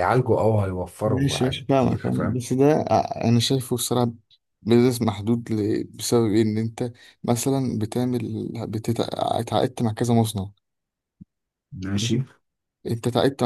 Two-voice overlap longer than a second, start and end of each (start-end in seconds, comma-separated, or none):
1.0-2.4